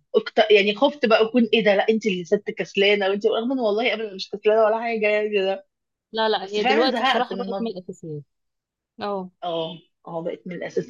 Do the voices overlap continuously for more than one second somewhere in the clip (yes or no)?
yes